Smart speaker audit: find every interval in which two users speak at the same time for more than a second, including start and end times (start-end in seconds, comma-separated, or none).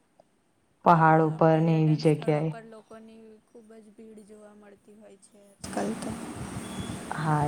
0.9-2.5